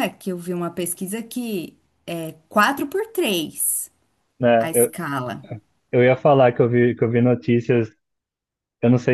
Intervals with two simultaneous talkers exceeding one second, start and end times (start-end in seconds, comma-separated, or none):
none